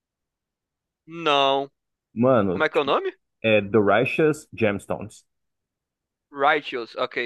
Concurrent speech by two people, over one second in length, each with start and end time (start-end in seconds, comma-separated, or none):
none